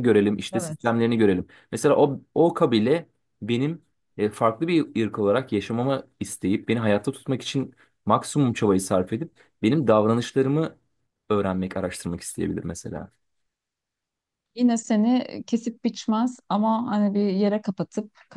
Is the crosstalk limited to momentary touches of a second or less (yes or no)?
yes